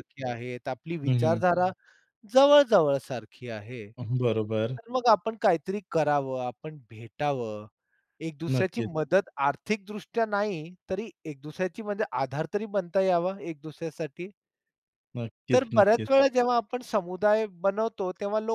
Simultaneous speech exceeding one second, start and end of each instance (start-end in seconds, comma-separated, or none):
none